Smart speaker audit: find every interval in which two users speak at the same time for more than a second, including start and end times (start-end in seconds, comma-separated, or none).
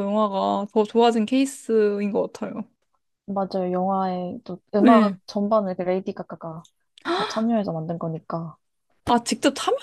none